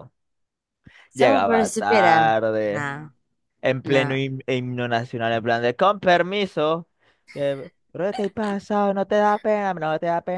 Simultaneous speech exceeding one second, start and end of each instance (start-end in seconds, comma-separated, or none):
1.1-2.9